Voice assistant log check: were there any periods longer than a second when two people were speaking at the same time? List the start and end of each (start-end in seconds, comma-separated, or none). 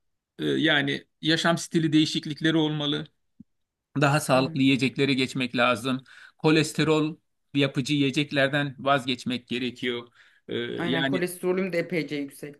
none